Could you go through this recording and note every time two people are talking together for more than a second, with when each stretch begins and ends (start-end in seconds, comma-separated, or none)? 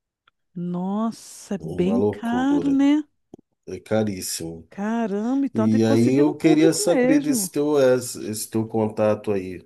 1.6-2.8, 5.5-7.5